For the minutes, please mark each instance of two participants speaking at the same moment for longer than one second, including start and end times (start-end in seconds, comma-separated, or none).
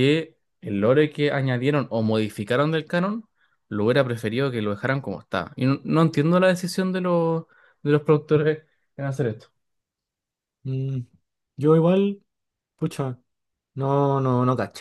none